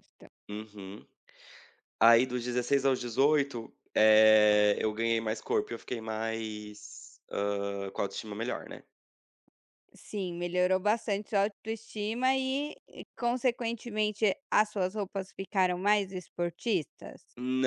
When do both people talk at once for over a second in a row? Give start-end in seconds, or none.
none